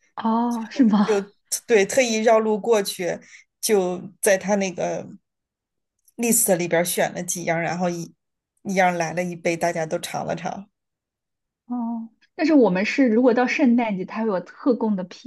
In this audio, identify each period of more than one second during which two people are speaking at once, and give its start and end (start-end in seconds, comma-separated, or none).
none